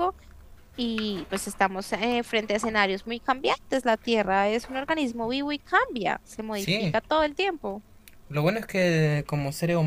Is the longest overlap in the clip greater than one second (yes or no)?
no